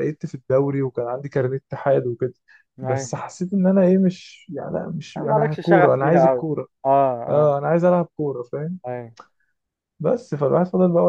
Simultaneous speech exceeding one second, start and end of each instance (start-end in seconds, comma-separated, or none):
5.2-6.5